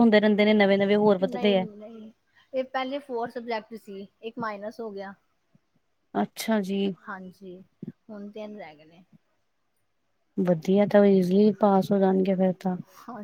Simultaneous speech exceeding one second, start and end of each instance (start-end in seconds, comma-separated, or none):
none